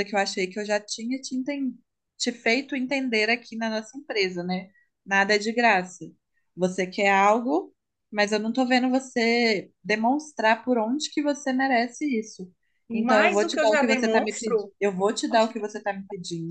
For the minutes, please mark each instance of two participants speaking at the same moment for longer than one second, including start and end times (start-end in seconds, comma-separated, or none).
12.9-14.7